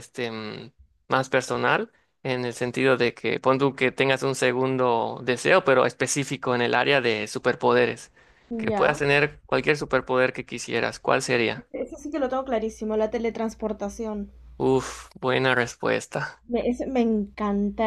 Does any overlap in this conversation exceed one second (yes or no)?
no